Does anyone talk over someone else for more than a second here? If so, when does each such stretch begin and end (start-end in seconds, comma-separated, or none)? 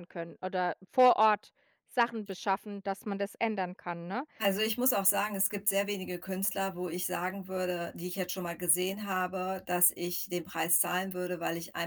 none